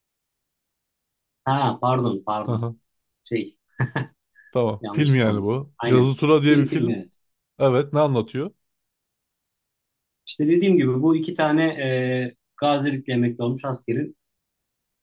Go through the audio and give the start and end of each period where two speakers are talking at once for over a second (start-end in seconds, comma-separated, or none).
4.8-7.0